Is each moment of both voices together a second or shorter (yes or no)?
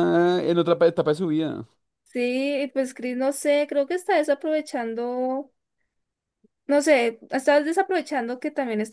yes